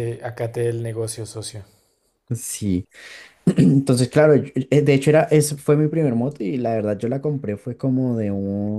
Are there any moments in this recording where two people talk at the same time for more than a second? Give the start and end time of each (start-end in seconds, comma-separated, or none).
none